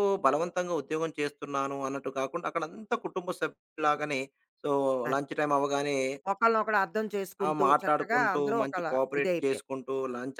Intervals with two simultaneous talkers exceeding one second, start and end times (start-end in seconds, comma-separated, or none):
7.5-9.7